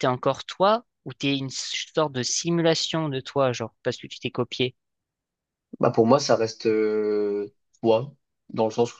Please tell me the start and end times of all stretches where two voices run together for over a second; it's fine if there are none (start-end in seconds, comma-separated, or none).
none